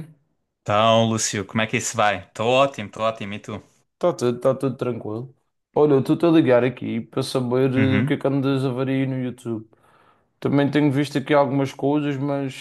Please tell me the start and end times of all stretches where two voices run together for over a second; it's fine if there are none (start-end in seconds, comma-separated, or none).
none